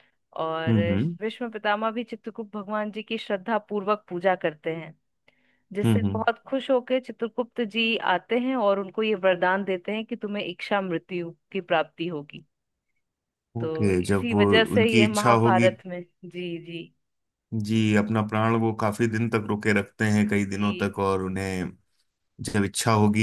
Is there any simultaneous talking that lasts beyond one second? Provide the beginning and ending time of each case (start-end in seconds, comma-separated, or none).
13.6-15.7